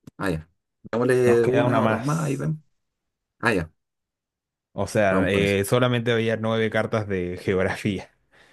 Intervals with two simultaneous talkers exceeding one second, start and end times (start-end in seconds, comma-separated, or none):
1.2-2.5